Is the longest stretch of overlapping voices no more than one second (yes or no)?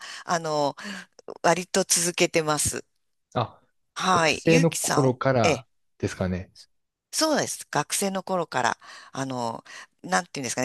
no